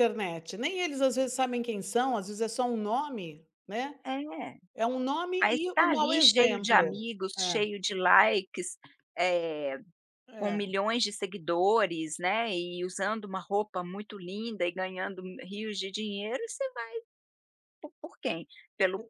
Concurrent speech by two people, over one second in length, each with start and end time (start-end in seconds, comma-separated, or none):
5.4-7.6